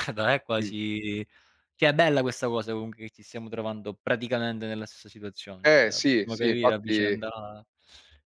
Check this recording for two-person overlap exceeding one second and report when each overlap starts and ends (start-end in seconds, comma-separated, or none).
5.6-7.2